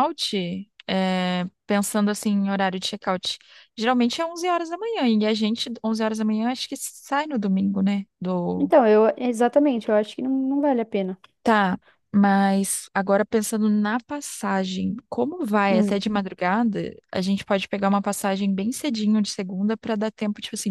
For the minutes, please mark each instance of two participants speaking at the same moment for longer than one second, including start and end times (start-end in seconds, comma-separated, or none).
none